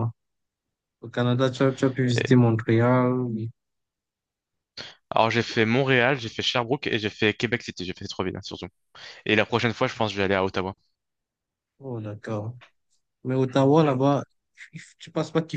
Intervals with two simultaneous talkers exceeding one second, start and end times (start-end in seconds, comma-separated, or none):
none